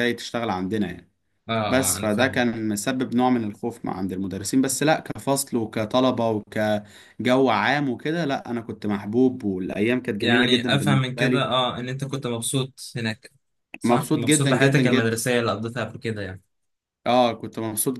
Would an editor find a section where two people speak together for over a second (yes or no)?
yes